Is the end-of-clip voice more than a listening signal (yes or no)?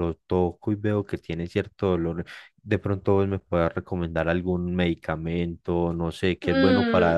yes